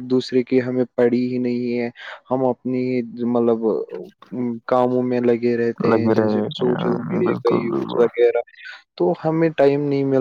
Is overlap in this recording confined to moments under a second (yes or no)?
no